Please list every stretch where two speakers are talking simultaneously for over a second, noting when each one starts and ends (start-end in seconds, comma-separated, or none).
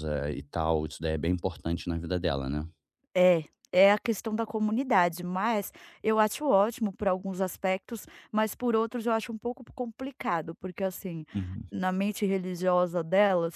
none